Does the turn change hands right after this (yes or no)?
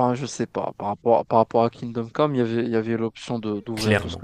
yes